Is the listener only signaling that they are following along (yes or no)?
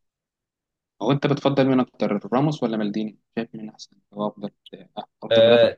no